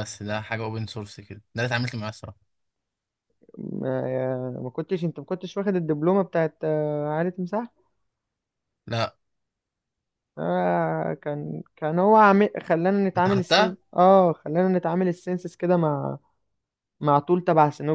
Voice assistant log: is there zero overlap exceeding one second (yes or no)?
yes